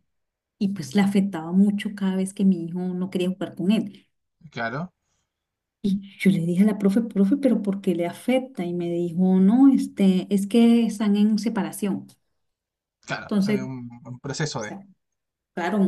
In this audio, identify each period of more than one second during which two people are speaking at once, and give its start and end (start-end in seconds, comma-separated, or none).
none